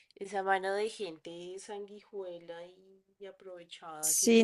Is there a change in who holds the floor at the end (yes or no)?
yes